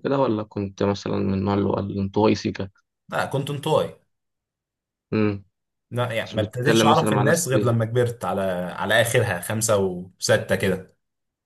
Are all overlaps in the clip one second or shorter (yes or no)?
no